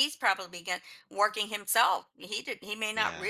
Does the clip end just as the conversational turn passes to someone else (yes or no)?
no